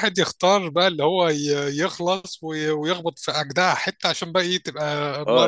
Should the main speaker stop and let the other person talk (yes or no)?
yes